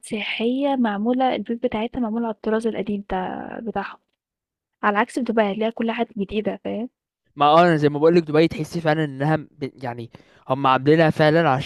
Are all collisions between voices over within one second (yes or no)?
yes